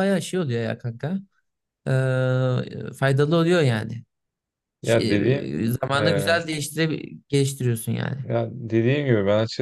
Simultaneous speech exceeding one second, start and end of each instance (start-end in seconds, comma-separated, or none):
4.8-6.3